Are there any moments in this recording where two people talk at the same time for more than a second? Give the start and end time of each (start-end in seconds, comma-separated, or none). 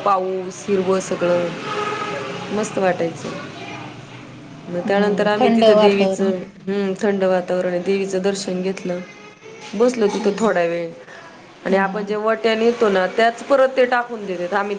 4.8-6.3